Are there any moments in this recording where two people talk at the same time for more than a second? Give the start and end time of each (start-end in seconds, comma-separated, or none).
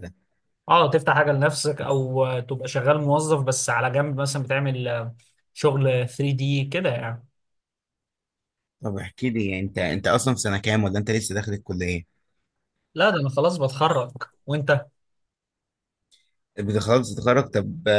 none